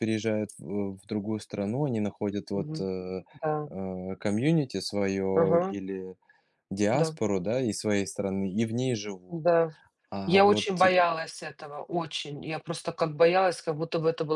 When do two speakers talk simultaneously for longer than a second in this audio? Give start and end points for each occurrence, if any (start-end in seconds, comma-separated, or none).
none